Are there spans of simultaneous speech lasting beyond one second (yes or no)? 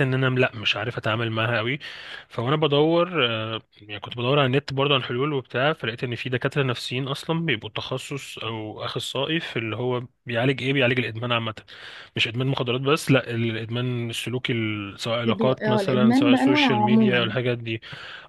yes